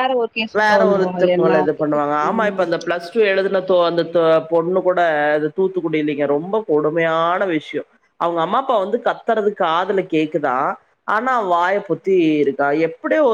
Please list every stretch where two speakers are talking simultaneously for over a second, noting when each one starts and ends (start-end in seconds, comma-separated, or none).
0.6-2.8